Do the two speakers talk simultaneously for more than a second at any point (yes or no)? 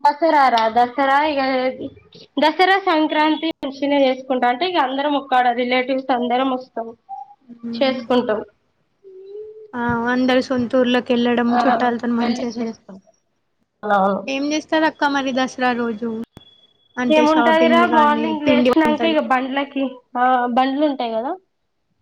yes